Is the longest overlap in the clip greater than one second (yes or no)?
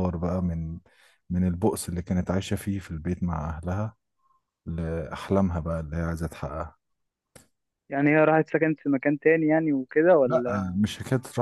no